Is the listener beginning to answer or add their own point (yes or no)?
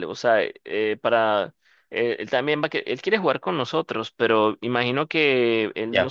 no